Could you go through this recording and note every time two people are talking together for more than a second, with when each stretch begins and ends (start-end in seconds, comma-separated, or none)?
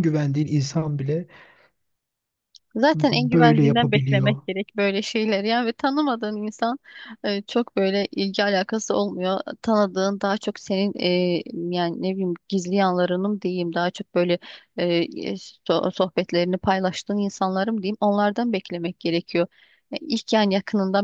2.9-4.4